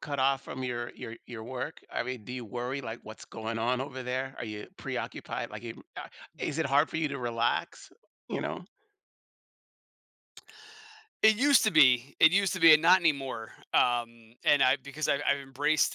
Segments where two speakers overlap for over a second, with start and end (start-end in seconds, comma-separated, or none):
none